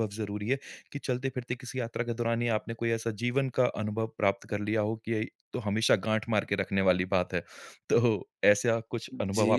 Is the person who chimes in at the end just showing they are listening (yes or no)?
no